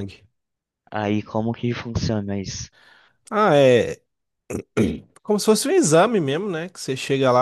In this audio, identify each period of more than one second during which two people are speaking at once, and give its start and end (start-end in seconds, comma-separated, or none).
none